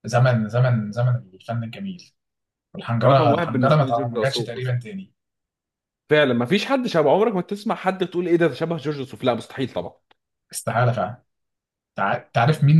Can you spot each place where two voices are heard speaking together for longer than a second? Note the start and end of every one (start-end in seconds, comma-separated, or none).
3.0-4.7